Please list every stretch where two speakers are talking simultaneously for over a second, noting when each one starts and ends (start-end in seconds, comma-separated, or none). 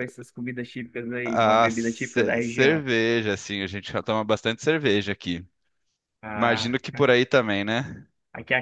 1.2-2.8